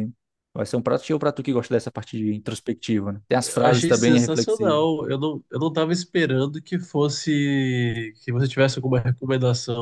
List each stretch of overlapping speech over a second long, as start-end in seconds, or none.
3.4-4.8